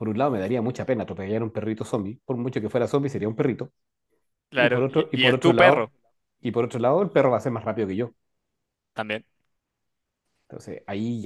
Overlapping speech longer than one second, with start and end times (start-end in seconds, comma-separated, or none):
4.6-5.9